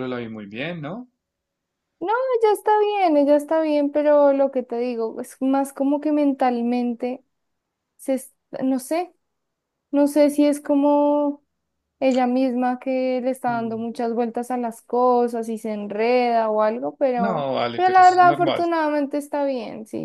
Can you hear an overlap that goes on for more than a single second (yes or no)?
yes